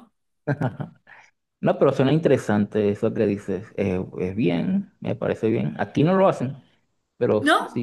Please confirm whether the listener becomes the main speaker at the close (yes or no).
no